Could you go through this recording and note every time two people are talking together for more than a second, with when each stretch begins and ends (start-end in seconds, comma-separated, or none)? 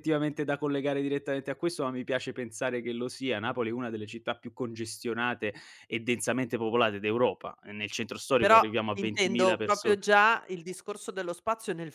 8.4-10.0